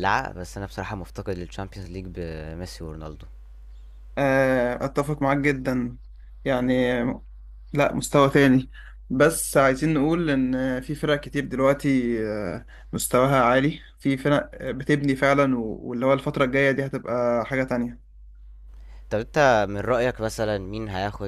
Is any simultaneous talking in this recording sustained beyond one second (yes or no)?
no